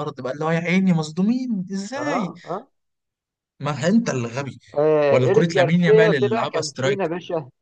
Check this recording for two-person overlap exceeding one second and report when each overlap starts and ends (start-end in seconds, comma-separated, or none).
5.1-7.1